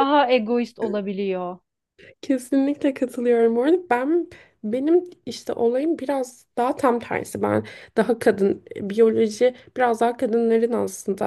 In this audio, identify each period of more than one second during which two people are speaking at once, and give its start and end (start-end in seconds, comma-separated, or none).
none